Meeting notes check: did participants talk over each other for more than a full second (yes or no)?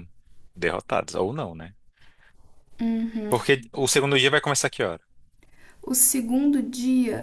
no